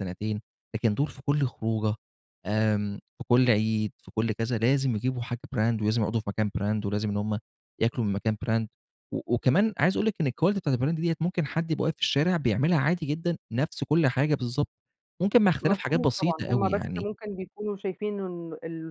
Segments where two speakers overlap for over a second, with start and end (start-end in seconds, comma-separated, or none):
15.6-17.1